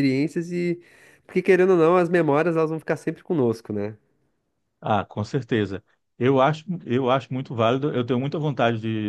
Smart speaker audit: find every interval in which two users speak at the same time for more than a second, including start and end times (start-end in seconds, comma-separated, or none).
none